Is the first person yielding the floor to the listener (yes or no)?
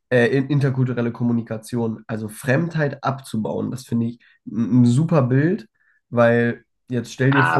yes